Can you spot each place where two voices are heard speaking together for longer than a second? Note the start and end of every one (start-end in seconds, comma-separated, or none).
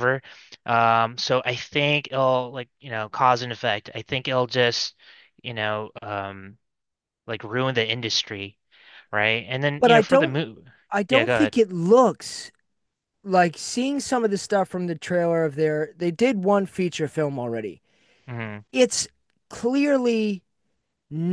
none